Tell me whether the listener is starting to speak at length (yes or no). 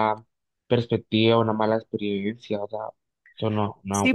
yes